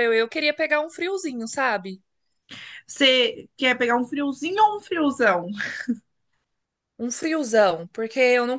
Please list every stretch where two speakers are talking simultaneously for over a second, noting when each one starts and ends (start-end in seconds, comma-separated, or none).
none